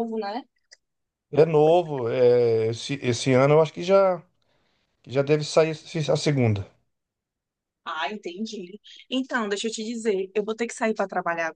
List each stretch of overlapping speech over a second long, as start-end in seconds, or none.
none